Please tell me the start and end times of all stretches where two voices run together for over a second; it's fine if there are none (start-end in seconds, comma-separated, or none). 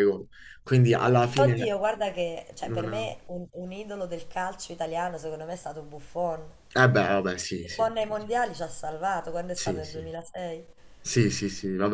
none